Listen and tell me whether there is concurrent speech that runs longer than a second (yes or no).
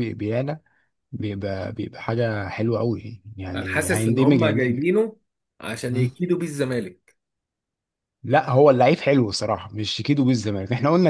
yes